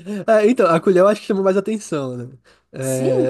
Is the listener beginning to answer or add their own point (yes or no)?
yes